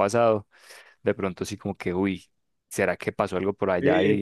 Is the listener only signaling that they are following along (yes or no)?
no